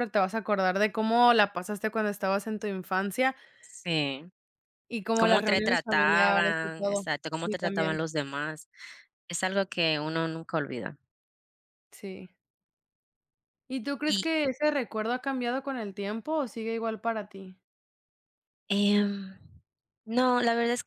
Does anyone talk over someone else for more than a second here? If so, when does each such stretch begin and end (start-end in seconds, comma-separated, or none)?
5.2-8.0